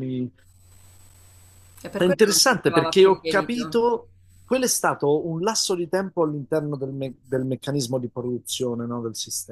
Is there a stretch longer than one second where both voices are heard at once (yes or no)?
yes